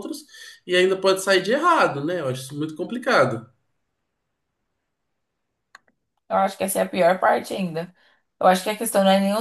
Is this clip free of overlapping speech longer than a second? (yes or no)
yes